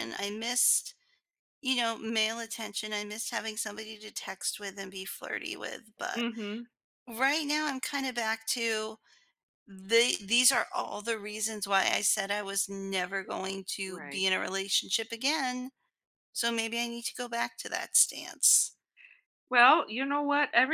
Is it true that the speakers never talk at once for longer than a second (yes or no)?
yes